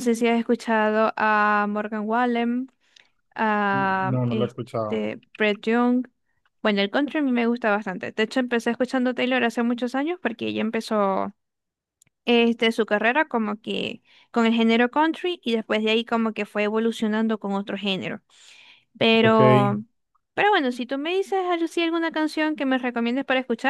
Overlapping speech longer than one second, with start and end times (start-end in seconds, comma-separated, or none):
3.7-5.0